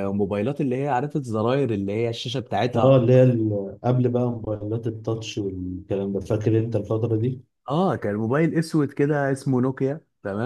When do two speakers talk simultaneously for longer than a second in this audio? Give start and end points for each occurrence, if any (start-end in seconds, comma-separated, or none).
none